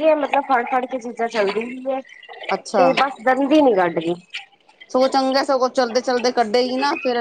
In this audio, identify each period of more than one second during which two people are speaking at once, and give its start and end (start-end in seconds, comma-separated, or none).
none